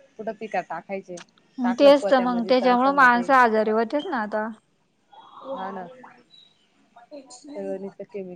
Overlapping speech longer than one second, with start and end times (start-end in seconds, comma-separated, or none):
1.8-3.3